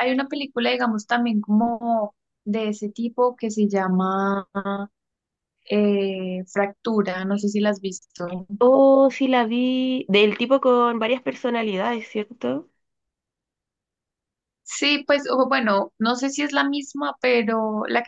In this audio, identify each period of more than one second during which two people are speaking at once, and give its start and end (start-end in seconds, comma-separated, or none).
none